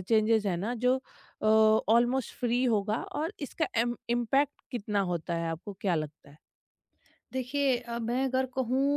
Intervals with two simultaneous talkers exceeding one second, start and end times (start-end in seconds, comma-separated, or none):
none